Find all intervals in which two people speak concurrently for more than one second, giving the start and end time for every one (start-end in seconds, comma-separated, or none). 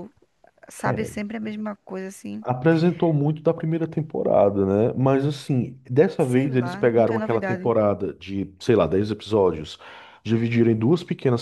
6.2-7.7